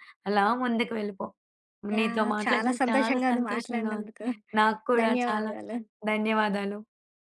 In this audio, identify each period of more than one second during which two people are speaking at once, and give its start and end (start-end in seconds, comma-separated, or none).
2.0-4.1